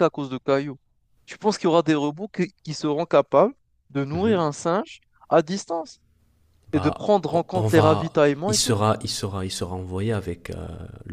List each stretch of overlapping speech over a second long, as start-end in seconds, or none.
6.7-8.8